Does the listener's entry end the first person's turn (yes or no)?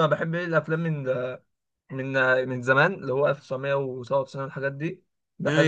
no